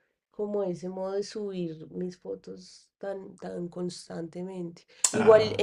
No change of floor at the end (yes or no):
yes